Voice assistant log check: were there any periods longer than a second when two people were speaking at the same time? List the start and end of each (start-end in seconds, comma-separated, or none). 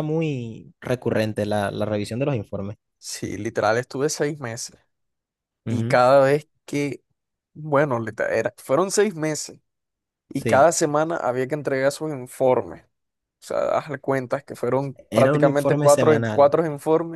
15.1-16.5